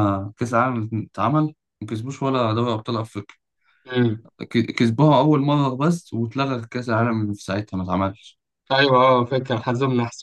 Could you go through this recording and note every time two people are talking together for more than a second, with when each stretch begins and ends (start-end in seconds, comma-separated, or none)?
none